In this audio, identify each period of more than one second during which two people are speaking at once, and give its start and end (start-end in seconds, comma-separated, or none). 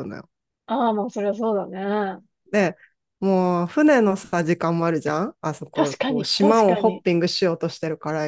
5.7-7.0